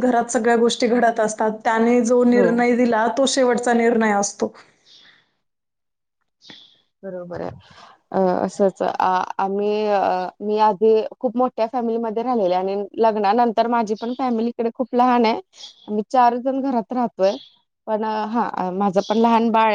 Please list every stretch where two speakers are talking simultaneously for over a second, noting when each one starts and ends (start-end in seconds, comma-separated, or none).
none